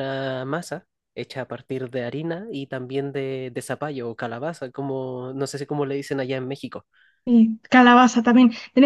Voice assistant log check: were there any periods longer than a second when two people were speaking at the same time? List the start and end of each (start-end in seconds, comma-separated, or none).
none